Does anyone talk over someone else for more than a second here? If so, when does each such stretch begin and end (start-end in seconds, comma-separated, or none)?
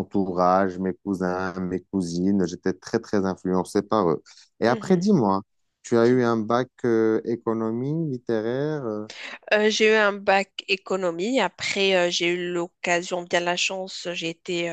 none